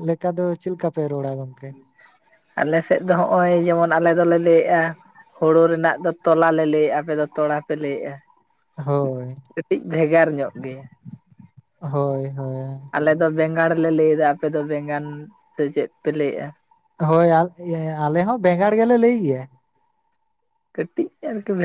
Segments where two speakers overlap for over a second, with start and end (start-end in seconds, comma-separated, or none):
none